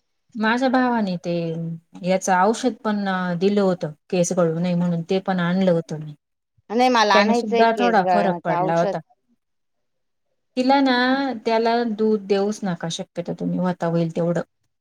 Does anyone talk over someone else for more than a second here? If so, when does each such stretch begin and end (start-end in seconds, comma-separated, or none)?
7.1-8.9